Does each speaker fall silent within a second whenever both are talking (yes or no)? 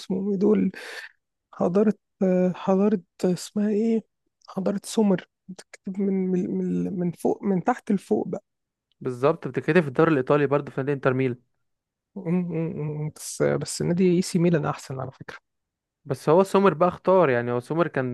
yes